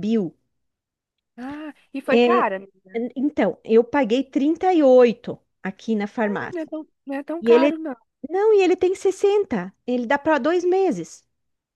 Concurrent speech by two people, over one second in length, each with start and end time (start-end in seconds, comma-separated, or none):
none